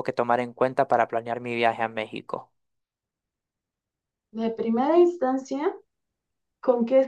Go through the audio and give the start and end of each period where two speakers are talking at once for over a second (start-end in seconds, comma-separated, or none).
none